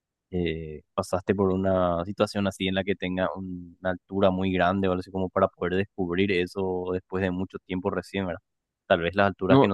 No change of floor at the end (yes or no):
yes